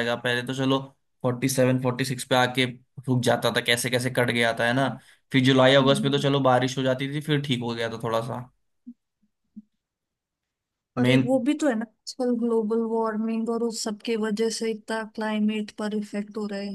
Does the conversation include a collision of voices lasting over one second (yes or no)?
no